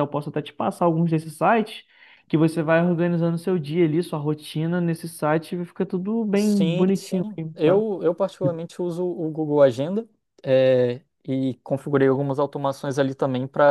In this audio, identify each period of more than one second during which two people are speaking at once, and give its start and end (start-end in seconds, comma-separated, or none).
6.3-7.8